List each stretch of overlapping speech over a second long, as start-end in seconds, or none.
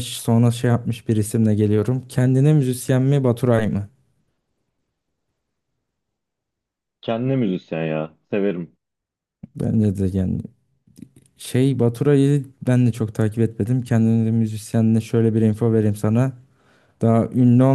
none